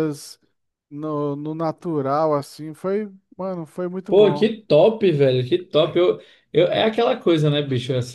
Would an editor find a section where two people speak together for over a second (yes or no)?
no